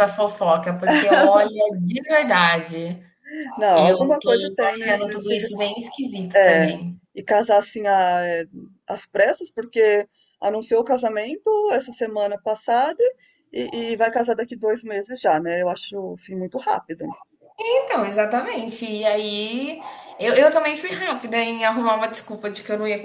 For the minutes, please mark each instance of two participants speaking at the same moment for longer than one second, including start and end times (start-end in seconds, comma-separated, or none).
3.8-5.3